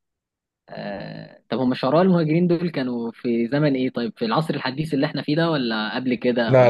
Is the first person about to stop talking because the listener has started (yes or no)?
yes